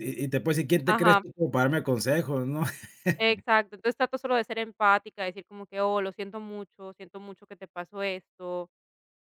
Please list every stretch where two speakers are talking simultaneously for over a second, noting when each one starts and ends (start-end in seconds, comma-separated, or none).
none